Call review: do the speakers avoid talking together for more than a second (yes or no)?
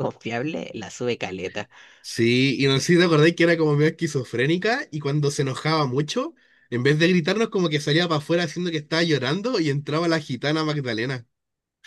yes